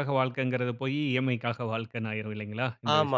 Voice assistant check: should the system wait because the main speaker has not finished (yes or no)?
no